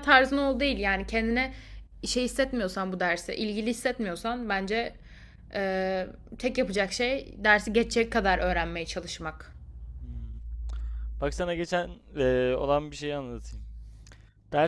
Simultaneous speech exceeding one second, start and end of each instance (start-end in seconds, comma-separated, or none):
none